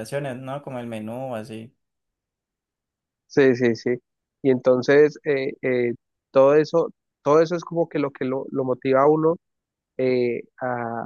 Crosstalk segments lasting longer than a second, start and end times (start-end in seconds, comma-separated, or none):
none